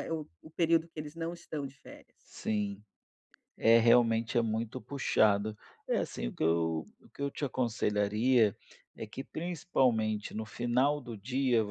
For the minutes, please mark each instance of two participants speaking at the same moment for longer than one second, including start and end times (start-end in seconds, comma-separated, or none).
none